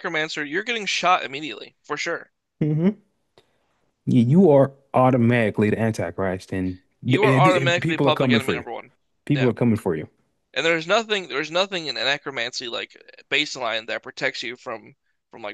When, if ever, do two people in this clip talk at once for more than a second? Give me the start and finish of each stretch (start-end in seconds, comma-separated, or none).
7.2-8.6